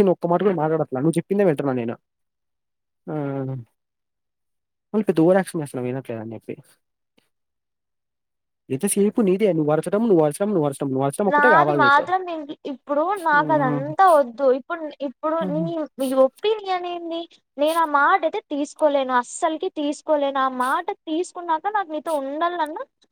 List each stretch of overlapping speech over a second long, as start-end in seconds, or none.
none